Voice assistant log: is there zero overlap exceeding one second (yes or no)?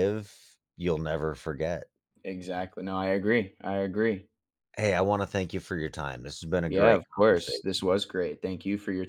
no